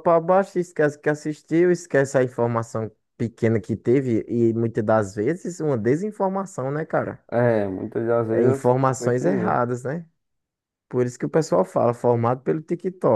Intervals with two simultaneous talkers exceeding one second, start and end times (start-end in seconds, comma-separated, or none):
8.3-9.6